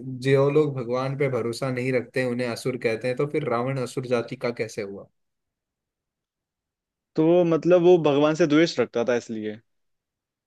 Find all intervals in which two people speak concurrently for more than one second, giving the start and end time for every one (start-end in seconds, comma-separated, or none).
none